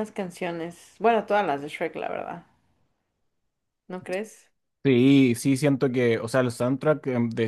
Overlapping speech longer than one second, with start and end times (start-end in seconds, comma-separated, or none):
none